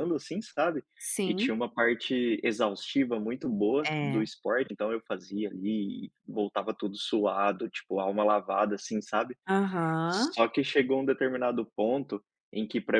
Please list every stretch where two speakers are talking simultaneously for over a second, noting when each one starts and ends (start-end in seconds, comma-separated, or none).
none